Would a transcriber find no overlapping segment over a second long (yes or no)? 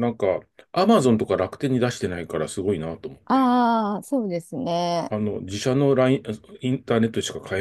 yes